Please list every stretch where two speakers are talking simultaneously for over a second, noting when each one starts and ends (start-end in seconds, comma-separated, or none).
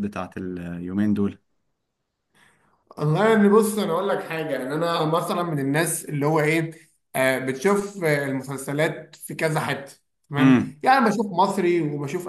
none